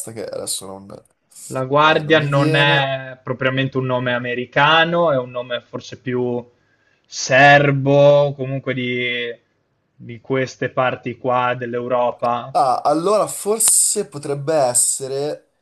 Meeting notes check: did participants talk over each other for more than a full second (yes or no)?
yes